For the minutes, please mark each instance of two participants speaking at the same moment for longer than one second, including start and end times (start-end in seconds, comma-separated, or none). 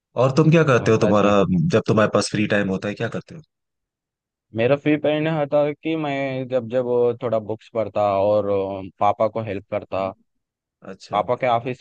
none